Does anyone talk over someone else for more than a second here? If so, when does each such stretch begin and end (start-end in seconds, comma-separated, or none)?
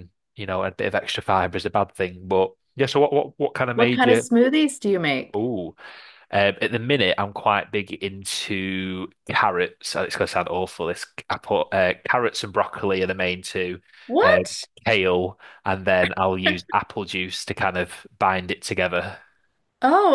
none